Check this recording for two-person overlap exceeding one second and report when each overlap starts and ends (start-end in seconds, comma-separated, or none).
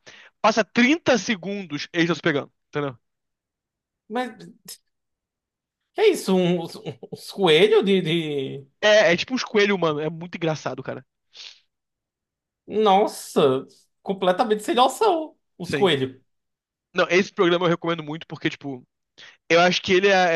none